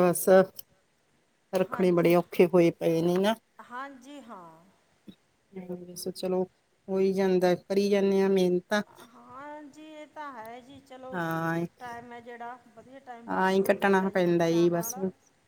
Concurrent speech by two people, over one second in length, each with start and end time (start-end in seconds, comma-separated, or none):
13.3-15.0